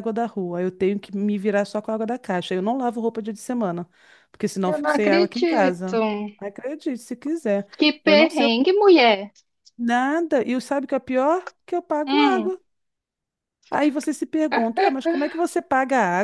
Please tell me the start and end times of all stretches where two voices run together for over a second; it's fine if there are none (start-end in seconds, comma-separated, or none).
4.7-6.0